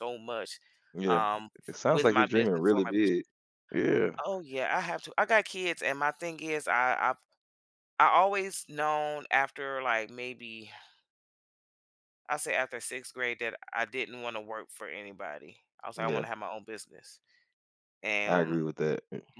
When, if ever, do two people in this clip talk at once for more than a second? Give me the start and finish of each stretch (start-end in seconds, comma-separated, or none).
1.9-3.1